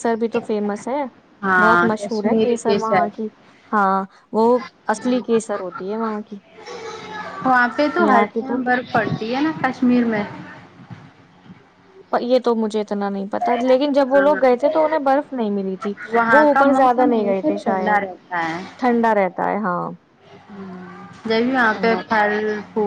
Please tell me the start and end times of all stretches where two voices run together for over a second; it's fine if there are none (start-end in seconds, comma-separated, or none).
1.6-3.2, 16.3-18.0